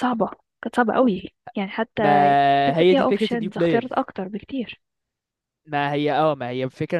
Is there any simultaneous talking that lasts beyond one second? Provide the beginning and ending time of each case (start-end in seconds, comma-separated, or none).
2.7-3.9